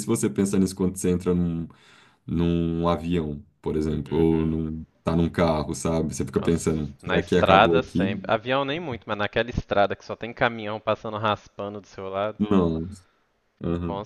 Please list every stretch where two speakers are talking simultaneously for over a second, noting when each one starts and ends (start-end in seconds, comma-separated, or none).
6.4-8.2